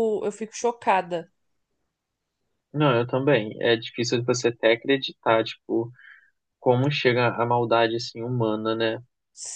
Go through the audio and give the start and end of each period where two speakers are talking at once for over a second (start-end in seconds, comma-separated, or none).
none